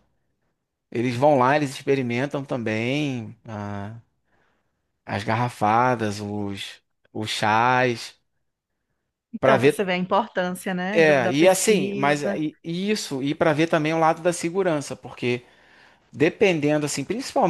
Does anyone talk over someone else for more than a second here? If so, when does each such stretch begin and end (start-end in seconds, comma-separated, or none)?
10.9-12.4